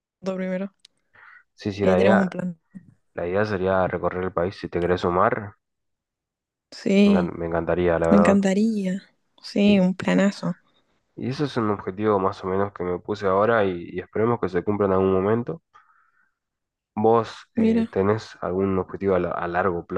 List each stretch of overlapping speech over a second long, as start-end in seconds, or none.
none